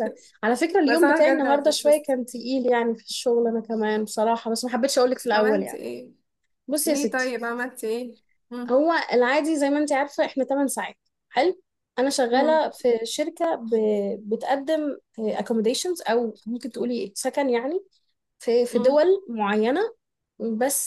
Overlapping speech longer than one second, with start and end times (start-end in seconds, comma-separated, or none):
0.9-2.1